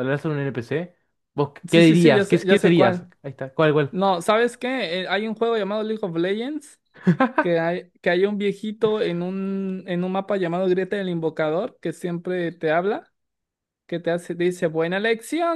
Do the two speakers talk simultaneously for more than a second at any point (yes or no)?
yes